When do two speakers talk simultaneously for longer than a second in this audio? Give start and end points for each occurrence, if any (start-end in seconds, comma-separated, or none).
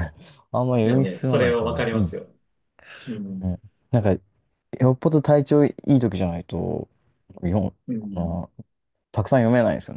0.8-2.1